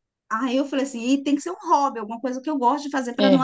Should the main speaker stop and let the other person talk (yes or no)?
yes